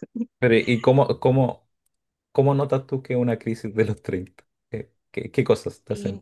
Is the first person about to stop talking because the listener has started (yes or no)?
yes